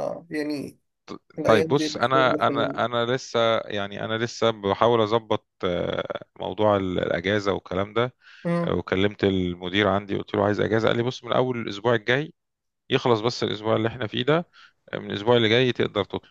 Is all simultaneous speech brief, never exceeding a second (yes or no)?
no